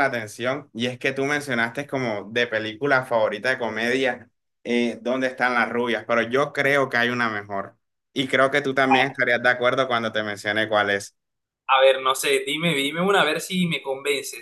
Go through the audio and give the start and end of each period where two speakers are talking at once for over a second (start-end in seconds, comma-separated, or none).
none